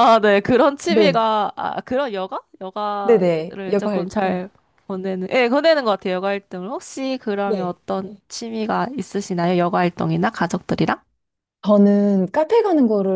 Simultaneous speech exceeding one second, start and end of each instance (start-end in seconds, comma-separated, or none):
3.0-4.4